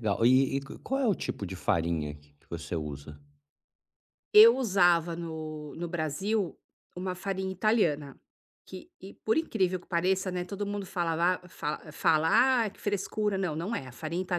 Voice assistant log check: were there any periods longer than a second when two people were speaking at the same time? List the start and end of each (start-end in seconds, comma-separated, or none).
none